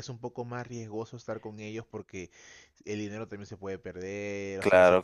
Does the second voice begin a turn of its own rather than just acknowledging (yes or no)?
yes